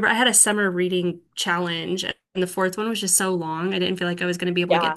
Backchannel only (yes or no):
no